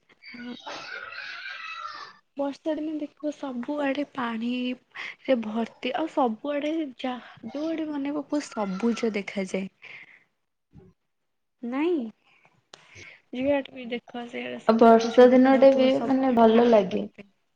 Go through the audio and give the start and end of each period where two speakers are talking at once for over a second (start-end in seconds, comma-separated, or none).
14.8-17.0